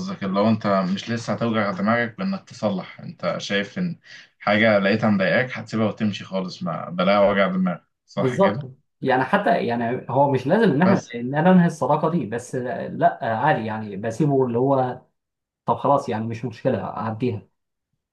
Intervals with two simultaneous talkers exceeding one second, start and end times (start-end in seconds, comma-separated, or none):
none